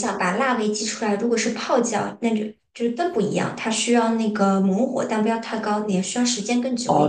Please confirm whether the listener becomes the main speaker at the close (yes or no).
yes